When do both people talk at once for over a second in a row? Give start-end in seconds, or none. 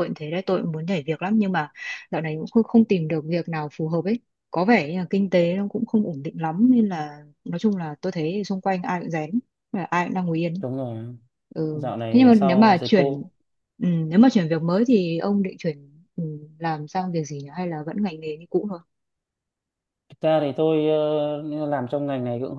11.7-13.2